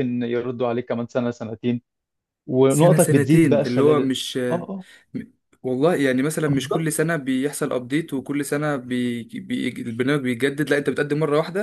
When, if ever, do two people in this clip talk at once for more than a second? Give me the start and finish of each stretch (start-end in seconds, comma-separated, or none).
2.7-4.1